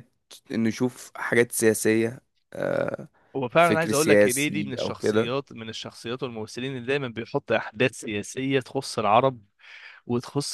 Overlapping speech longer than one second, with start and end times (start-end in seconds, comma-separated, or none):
3.6-5.3